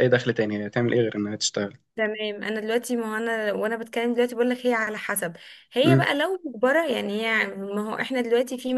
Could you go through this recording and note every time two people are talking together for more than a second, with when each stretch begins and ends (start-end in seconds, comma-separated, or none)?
none